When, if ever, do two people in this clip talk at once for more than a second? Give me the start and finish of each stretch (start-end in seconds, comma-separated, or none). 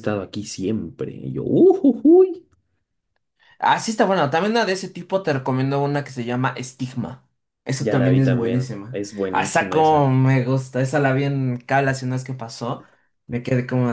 7.8-10.1